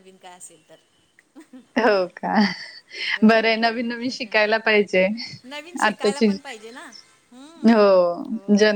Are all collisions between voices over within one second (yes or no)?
yes